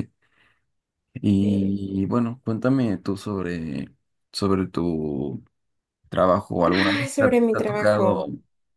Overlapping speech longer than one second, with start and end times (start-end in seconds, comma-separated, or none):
6.7-8.3